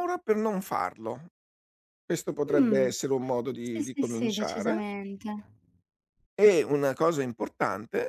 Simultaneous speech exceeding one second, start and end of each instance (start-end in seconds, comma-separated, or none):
3.6-4.8